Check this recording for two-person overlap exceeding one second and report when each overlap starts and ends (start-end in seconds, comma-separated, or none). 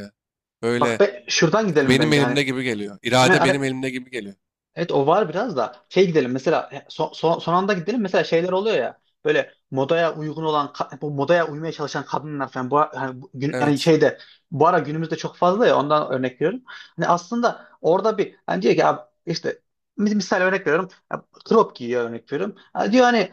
none